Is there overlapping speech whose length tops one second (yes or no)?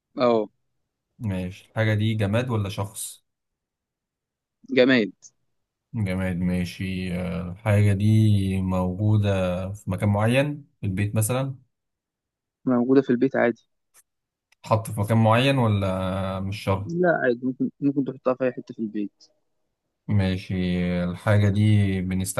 no